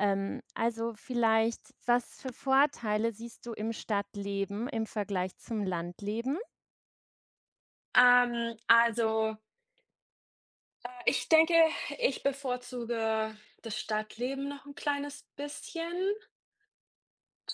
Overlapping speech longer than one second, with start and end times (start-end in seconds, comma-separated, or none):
none